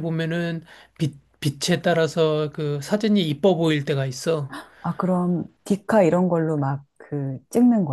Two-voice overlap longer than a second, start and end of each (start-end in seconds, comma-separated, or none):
none